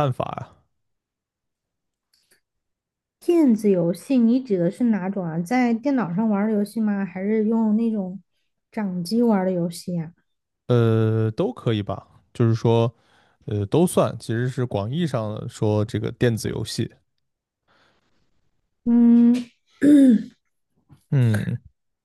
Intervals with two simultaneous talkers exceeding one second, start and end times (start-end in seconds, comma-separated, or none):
none